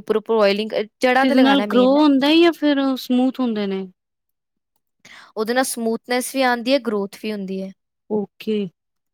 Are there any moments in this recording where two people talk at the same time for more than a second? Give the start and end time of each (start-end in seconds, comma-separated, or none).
none